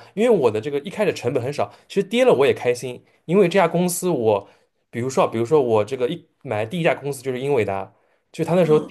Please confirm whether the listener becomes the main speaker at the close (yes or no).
no